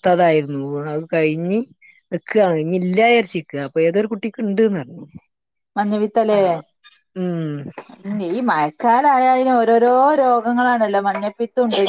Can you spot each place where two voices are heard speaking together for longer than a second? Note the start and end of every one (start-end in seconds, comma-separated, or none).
none